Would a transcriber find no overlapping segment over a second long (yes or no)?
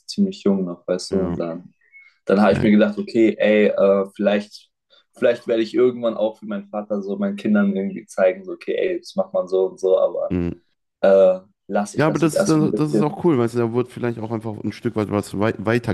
no